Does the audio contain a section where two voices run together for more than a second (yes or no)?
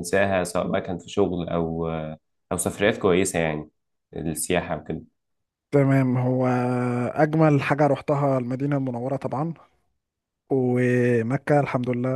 no